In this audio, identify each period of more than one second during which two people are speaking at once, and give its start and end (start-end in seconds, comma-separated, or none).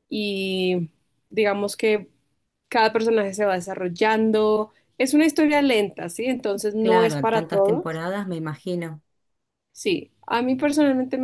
6.8-8.0